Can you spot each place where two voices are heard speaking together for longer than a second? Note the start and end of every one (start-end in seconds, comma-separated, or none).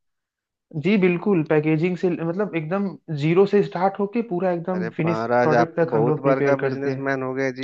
4.7-7.1